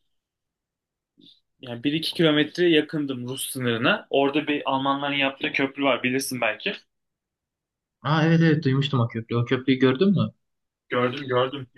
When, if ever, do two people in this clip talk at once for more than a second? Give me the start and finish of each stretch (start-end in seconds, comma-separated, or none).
none